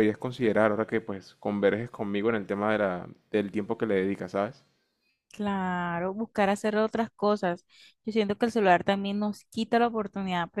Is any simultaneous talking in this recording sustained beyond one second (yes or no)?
no